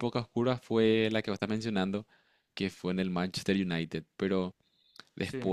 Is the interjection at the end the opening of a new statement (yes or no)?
no